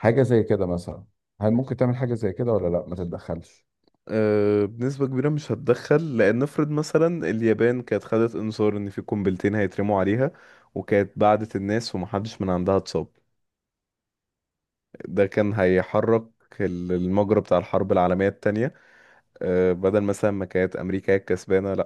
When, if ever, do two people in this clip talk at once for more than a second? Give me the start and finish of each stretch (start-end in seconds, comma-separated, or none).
none